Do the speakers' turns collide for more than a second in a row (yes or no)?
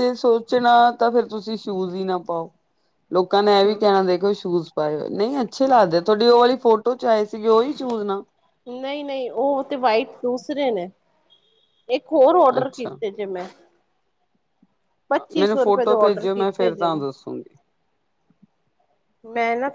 yes